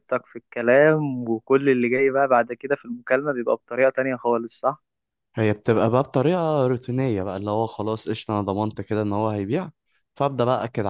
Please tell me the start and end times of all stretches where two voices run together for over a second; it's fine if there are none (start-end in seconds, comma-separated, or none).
none